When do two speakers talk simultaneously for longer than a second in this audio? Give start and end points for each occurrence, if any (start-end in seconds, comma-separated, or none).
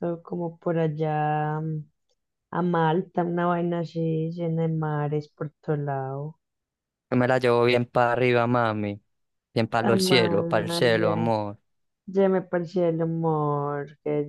9.8-11.3